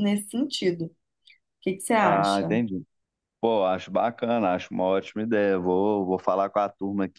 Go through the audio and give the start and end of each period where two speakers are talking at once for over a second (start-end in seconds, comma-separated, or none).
none